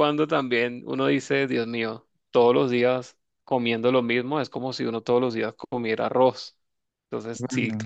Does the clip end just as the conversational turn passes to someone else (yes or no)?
no